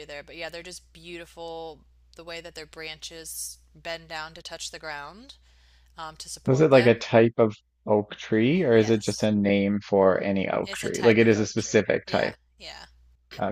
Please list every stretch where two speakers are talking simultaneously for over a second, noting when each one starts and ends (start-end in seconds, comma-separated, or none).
10.6-12.3